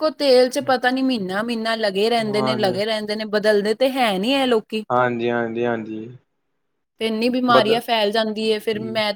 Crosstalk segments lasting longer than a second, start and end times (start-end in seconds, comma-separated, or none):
none